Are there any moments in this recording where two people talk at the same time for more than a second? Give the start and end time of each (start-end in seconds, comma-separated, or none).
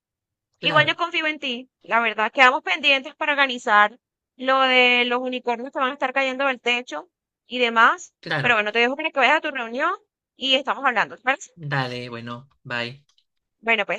none